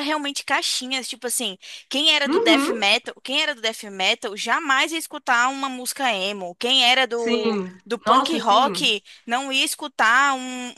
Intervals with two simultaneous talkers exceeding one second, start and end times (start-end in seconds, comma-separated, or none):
7.2-8.9